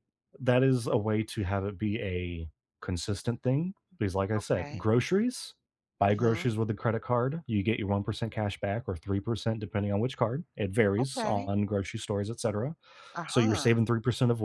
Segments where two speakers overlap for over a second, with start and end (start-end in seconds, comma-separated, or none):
none